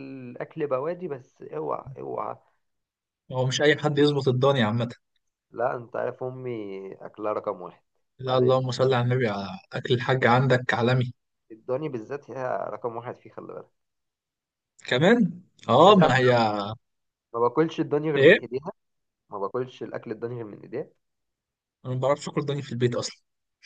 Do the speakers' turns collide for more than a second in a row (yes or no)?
no